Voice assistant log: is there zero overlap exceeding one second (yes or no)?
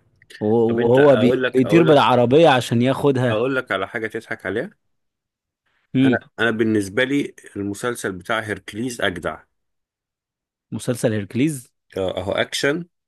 no